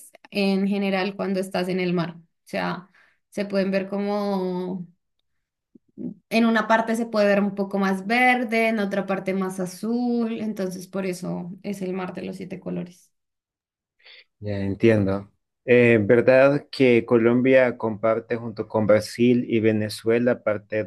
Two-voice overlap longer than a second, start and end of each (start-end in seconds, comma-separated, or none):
none